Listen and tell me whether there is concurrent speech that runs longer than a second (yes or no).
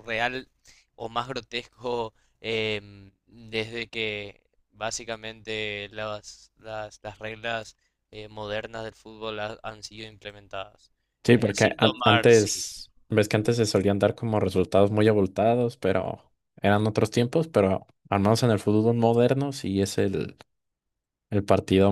yes